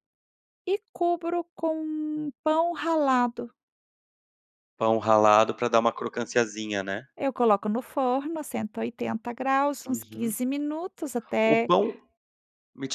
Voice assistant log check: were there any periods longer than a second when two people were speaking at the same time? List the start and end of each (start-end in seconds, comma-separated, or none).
none